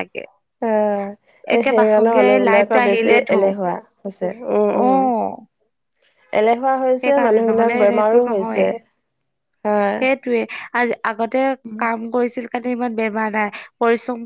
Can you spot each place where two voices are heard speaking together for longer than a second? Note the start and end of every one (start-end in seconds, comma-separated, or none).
1.6-3.5, 7.0-8.7